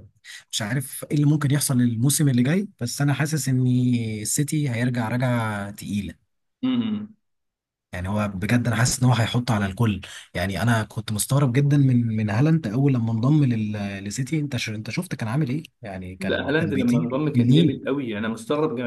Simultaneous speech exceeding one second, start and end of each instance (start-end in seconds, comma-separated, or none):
16.2-17.8